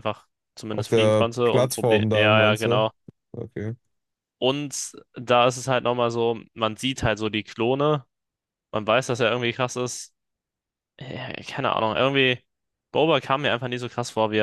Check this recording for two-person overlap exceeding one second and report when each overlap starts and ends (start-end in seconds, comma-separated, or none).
0.7-2.9